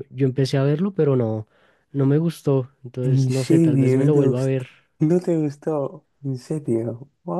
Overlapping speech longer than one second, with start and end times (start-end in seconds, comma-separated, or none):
3.0-4.7